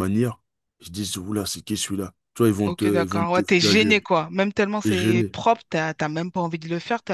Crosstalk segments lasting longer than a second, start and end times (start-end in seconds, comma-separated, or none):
2.6-4.0